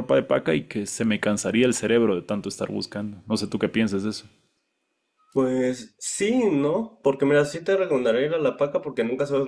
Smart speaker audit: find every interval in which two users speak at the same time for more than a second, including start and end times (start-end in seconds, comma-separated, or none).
none